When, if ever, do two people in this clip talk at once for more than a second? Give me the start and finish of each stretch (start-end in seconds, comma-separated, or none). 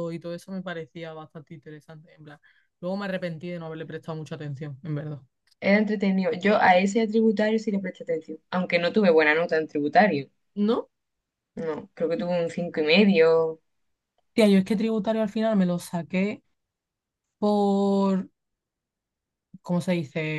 none